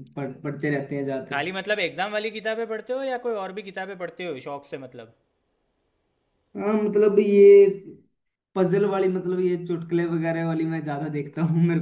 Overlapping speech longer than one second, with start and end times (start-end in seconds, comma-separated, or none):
none